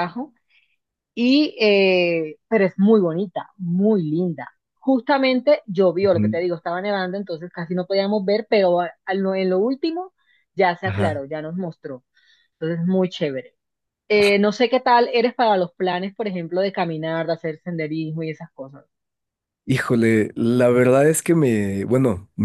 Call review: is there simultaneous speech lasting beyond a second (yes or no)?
no